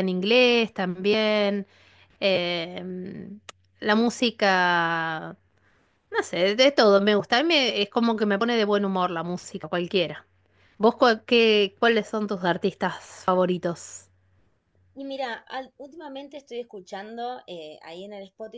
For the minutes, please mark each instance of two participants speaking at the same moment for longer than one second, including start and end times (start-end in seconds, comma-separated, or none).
none